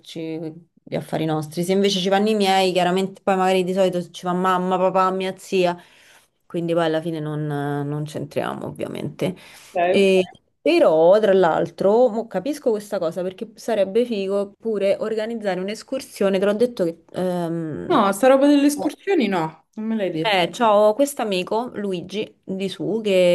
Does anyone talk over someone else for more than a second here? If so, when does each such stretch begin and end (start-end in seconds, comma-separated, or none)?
none